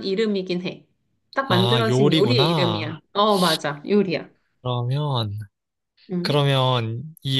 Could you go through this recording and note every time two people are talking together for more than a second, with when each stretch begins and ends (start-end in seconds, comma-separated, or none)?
1.5-3.0